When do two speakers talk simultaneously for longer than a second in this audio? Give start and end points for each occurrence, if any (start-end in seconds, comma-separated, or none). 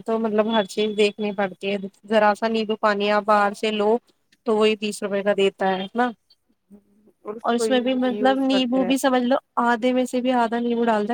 7.6-9.3